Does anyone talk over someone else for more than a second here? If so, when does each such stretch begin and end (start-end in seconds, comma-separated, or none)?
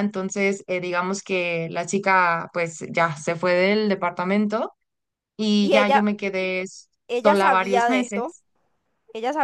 7.1-8.3